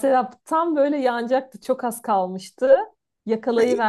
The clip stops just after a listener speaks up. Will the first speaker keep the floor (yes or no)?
yes